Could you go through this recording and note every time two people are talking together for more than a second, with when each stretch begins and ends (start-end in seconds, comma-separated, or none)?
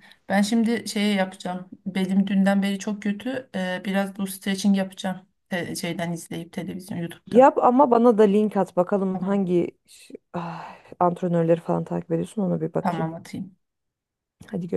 none